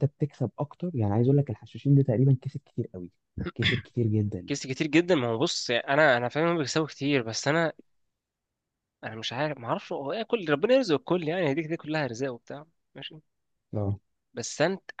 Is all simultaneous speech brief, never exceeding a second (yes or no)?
yes